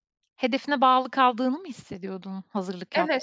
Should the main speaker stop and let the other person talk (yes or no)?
yes